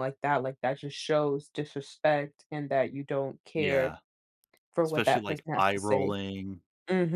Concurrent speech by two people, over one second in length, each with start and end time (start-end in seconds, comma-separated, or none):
4.8-6.1